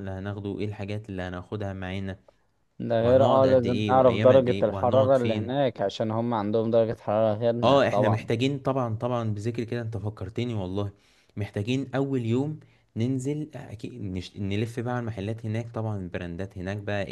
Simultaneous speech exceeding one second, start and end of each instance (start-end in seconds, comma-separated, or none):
3.0-5.6